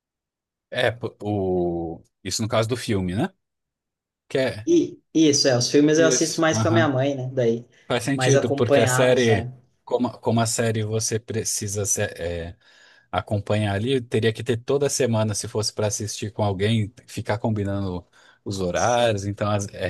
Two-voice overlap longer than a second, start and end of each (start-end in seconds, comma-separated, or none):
8.1-9.5